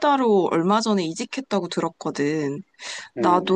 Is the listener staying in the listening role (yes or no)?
yes